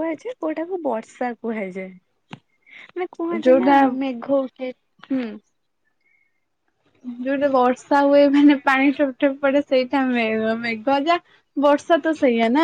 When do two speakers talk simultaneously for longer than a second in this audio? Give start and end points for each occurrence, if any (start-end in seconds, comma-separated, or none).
none